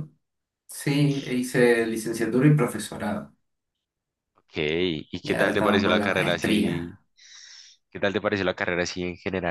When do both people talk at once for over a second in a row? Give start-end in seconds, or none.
5.2-7.0